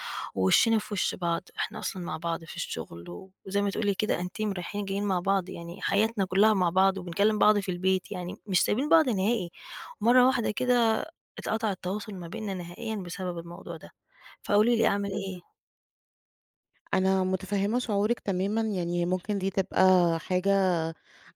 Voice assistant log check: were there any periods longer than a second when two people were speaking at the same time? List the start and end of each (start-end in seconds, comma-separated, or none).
none